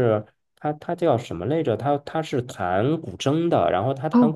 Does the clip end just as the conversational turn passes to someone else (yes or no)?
no